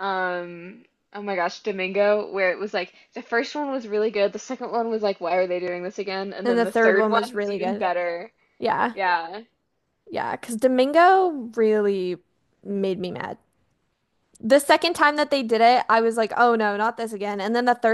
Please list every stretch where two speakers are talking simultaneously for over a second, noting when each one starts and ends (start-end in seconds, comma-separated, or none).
6.4-7.9